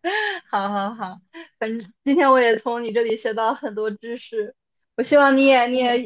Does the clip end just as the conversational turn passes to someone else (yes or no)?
no